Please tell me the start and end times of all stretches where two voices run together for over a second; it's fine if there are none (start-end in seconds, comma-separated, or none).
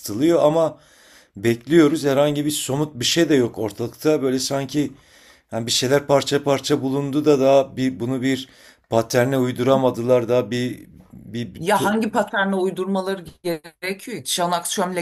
none